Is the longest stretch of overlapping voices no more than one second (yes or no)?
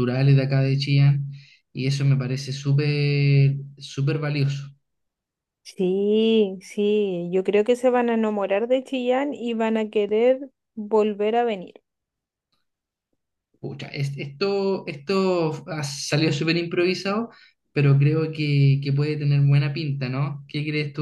yes